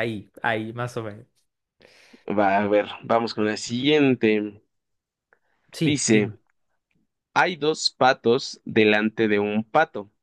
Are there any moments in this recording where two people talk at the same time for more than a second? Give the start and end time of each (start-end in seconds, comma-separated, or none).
none